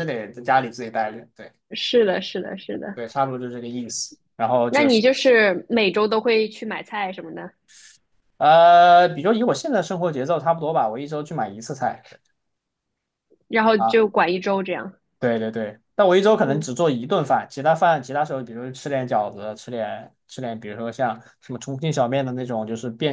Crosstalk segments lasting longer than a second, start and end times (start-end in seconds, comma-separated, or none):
none